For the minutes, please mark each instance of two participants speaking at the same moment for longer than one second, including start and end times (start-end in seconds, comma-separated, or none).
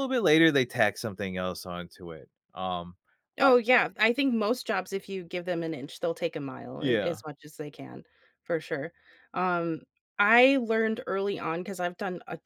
none